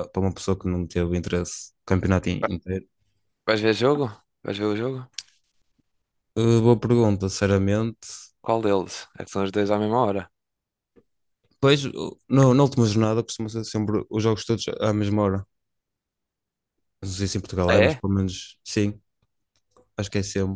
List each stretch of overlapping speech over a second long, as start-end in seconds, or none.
none